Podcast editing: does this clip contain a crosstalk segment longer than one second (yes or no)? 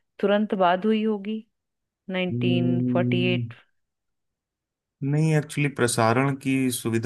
yes